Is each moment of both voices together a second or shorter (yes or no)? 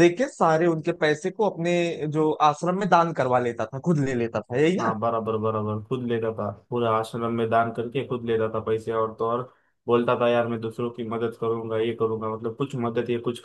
yes